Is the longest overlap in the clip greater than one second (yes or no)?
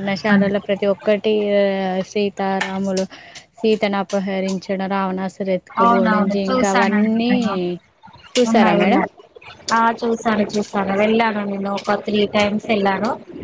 yes